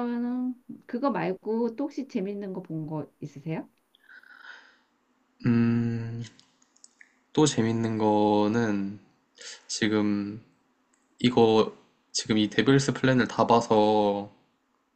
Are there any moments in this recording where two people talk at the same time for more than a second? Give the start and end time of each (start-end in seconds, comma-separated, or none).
none